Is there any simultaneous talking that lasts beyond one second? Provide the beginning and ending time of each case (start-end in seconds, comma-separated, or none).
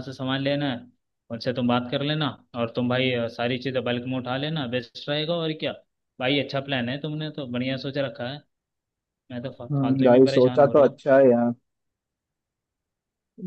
9.7-11.0